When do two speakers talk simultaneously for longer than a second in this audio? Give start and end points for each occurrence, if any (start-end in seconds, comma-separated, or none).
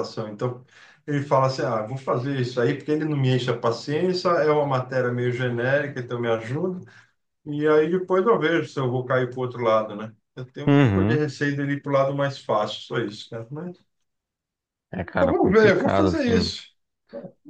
15.2-16.5